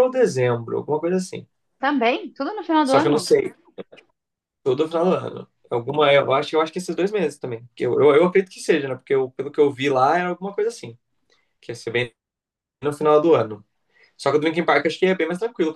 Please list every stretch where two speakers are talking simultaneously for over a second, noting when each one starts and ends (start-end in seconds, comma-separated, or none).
none